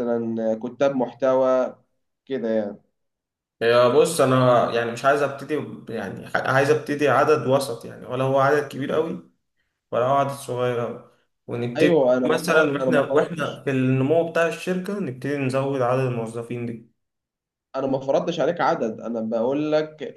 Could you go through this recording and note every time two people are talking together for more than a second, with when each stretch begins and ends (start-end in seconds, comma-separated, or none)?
11.8-13.6